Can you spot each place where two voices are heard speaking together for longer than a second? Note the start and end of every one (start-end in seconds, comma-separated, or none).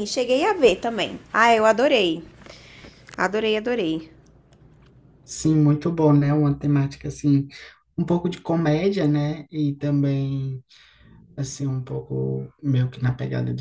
none